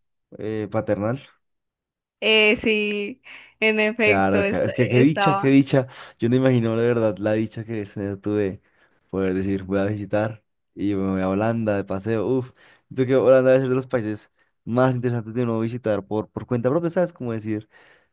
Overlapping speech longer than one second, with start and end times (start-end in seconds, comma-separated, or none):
4.0-5.5